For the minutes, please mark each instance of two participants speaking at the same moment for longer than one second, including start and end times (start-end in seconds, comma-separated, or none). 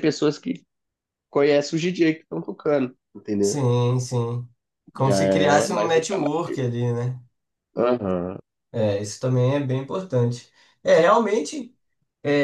5.0-6.3